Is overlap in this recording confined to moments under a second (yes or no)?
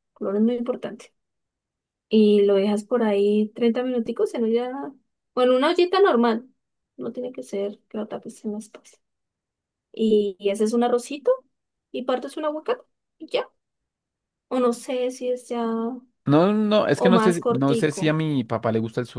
no